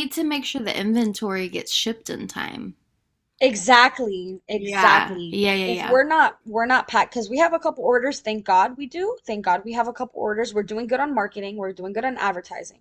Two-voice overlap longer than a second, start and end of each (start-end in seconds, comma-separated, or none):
4.5-6.0